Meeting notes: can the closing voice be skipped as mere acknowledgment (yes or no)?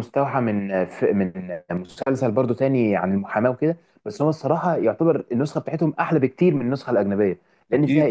yes